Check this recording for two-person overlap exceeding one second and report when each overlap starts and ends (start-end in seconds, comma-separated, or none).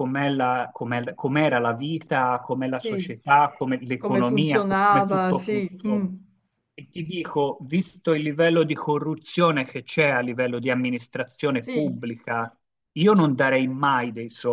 4.0-6.1